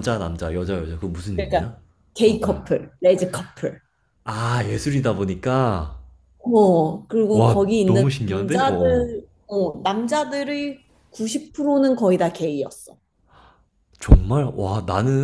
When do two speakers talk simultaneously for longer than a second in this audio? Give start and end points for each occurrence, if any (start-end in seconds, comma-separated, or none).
7.3-9.1